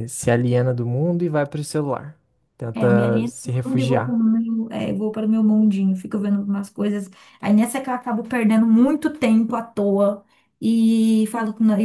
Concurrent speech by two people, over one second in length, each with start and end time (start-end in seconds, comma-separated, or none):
2.7-4.2